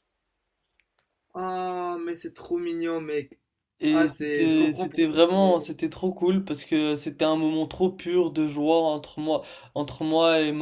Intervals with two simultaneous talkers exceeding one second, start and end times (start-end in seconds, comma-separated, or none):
3.9-5.6